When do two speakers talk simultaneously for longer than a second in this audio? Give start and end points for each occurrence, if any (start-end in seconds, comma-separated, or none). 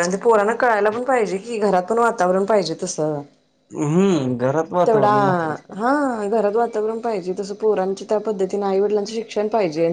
none